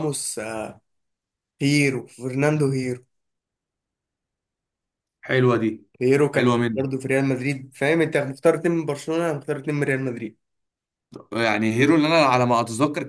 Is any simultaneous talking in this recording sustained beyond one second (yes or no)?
no